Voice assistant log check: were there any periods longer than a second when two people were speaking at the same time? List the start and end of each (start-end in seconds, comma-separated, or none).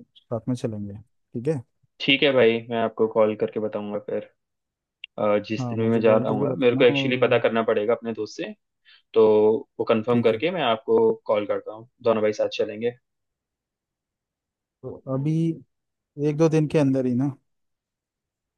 5.6-7.4